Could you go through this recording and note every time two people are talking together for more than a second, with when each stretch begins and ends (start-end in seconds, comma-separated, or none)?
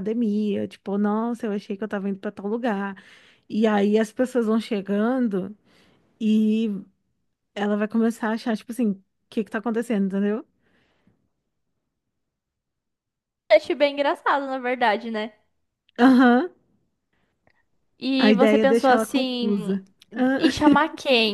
18.2-19.7